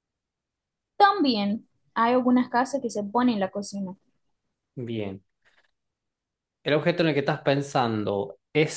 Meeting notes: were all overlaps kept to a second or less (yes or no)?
yes